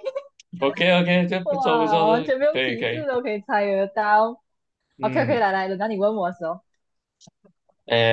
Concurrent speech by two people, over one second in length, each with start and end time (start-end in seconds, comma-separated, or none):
1.4-3.0